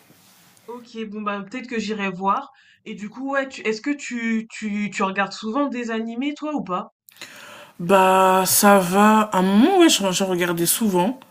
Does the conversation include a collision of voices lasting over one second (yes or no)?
no